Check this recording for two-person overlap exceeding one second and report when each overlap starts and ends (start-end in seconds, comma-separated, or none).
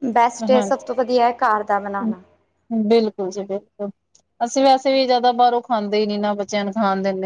none